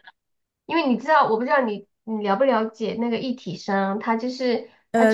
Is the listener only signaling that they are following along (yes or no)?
yes